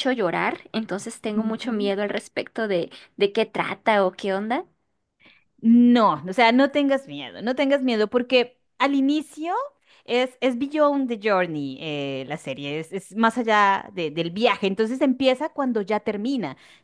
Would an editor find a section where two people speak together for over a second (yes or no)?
no